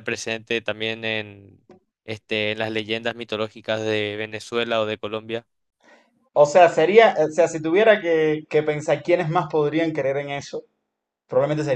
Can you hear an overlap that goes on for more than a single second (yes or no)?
no